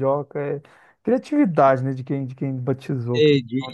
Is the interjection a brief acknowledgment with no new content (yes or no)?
no